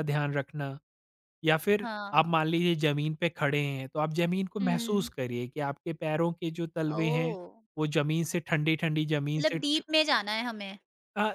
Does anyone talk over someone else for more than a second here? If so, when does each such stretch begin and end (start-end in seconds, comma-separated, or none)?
none